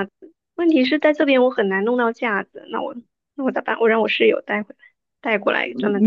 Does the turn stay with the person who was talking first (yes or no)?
no